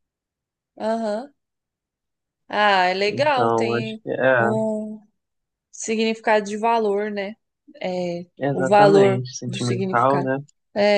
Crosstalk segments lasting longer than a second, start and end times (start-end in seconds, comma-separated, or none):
3.0-4.5, 8.4-10.3